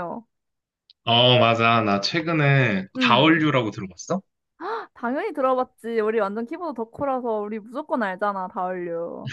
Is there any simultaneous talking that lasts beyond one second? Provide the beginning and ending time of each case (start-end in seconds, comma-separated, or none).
none